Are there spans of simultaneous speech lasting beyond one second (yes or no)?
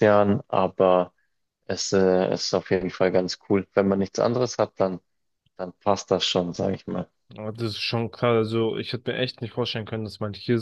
no